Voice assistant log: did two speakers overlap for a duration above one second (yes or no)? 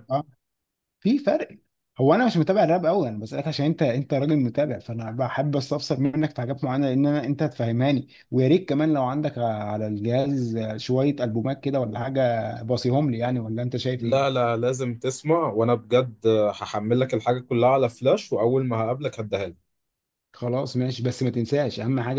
no